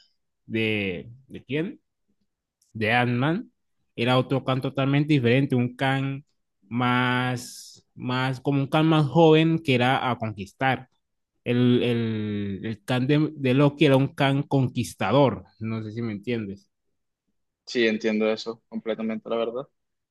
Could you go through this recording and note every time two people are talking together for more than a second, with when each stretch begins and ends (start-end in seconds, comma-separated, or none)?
none